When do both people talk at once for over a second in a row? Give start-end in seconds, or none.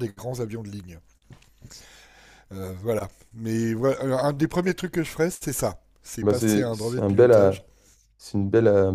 6.2-7.5